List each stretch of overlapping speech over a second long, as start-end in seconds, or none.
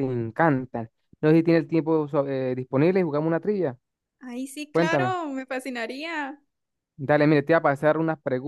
none